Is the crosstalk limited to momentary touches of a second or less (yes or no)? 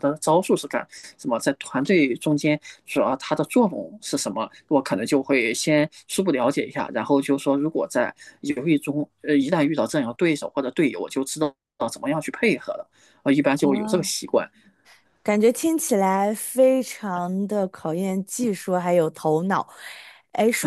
yes